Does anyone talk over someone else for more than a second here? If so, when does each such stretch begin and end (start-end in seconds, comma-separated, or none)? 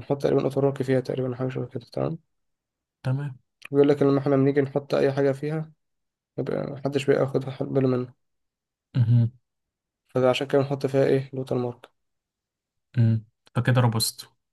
none